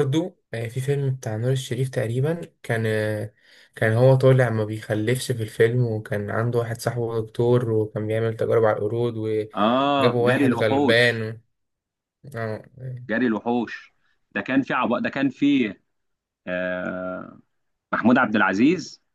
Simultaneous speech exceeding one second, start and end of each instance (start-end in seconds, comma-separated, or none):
9.6-11.2